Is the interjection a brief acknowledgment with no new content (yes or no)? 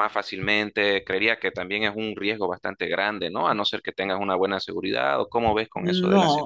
no